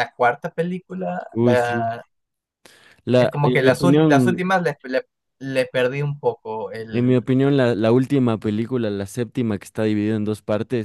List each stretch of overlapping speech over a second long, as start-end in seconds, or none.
3.2-4.4